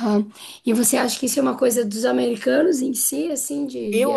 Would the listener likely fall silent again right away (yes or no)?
no